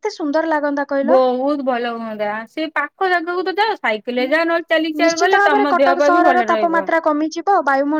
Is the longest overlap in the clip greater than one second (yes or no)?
yes